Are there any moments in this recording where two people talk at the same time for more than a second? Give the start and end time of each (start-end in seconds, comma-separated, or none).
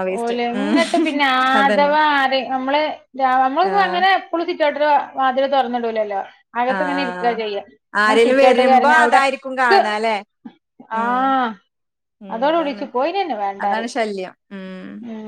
8.0-9.8